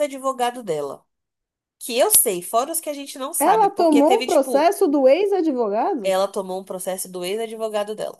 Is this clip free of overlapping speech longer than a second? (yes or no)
no